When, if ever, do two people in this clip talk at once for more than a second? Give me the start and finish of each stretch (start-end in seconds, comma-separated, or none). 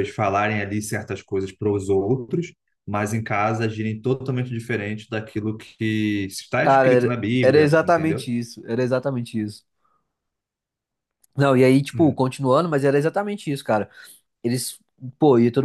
6.6-8.3